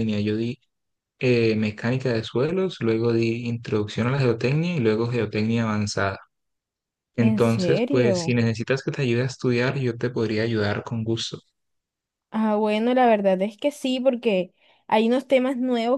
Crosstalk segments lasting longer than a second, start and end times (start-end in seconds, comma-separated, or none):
7.2-8.4